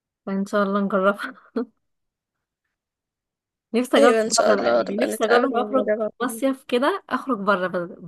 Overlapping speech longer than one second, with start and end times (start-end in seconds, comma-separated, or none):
4.0-6.1